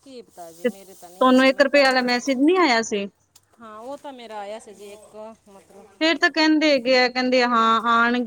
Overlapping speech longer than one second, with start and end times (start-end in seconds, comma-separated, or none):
0.6-1.8